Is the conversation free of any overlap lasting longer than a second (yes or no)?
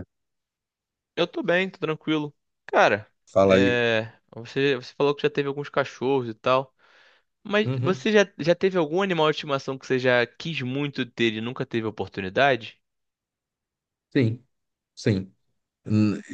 yes